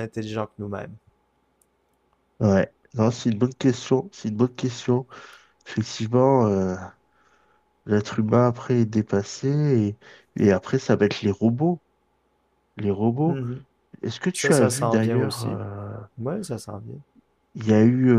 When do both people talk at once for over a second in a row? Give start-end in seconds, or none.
14.3-15.6